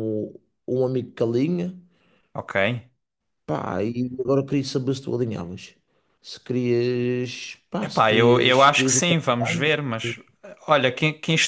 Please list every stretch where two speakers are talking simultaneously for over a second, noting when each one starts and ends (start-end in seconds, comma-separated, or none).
7.8-9.7